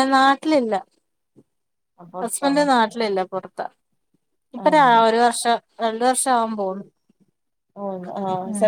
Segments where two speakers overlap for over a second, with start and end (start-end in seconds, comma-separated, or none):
none